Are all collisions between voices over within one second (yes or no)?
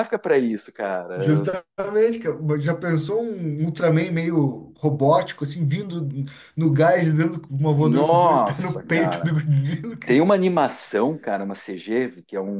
no